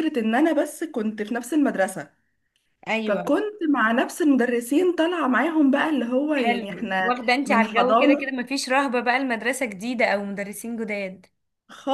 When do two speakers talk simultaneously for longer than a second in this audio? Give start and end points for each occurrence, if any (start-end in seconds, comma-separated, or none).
6.3-8.3